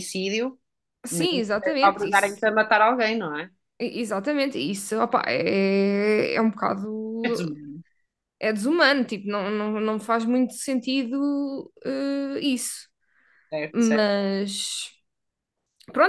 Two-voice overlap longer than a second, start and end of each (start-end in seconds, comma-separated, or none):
1.1-2.6